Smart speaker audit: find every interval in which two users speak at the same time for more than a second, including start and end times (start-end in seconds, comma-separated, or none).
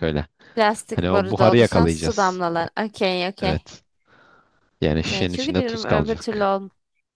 0.9-2.4, 5.0-6.5